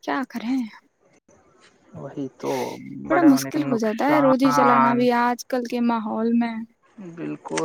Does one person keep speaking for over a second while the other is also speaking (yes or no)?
yes